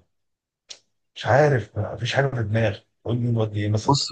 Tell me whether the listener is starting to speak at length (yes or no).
yes